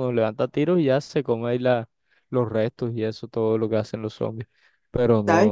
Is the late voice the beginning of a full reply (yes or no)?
yes